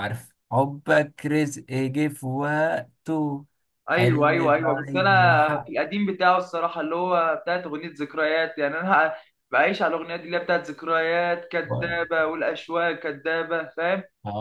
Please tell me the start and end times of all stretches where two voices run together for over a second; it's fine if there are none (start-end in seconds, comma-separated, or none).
3.9-5.7